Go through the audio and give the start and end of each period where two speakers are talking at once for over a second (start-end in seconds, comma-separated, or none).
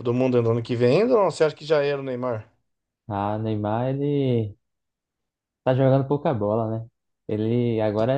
none